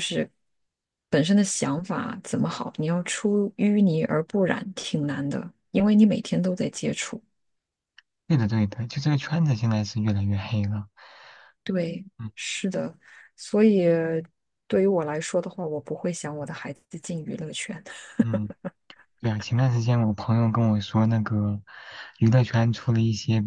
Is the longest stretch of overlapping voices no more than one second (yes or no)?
yes